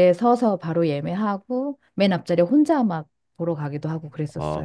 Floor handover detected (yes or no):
yes